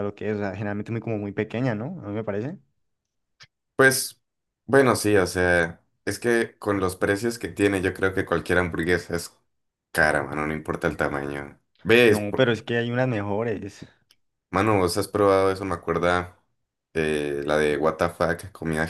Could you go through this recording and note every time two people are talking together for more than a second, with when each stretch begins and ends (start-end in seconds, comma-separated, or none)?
none